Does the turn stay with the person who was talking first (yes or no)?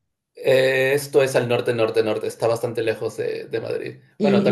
no